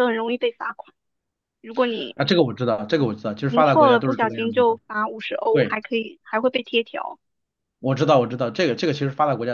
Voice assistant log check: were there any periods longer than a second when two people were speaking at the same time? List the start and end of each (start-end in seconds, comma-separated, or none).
3.5-4.8